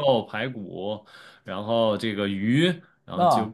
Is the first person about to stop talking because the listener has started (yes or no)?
no